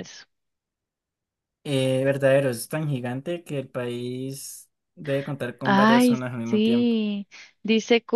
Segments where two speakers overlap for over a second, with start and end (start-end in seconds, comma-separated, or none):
5.6-7.0